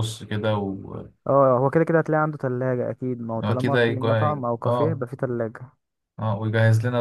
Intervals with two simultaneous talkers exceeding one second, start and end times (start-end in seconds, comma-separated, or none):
3.4-5.0